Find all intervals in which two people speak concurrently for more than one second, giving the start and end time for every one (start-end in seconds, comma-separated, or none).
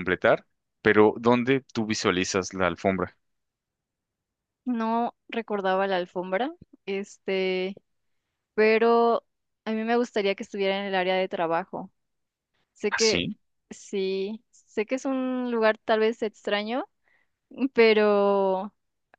none